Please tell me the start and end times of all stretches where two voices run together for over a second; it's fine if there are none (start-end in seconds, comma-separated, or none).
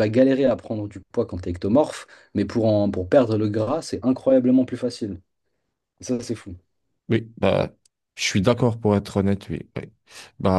none